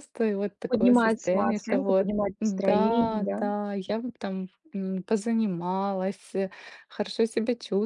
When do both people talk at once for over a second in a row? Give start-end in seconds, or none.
0.7-3.4